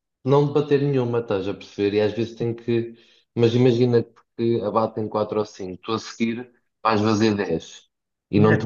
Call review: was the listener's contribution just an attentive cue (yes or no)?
yes